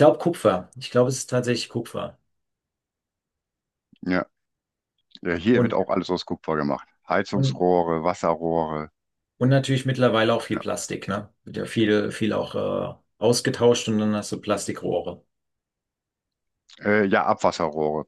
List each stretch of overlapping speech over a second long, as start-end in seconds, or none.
none